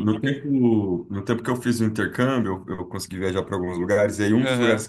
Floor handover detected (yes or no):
no